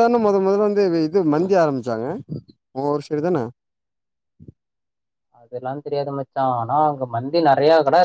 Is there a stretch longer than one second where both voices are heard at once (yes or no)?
no